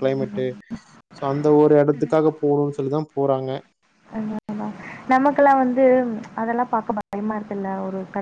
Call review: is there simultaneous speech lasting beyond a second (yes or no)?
no